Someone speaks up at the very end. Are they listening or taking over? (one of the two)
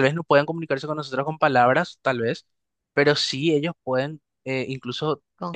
listening